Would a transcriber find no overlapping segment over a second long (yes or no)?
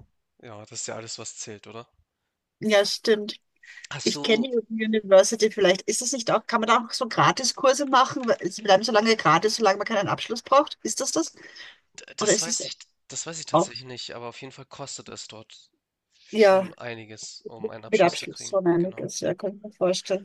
no